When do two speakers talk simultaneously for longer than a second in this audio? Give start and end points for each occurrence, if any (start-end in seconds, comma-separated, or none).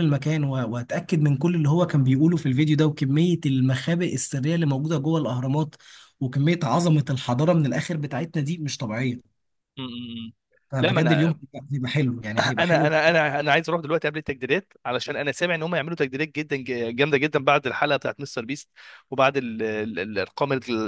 none